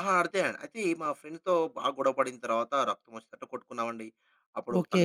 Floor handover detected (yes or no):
no